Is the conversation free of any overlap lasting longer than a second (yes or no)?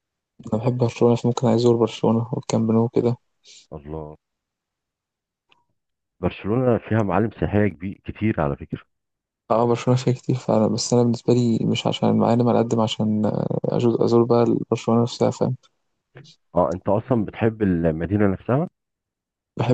yes